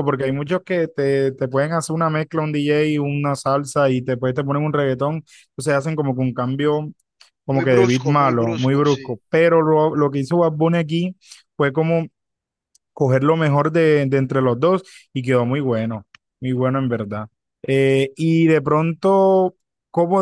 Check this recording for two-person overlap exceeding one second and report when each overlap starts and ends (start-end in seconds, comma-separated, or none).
7.5-9.2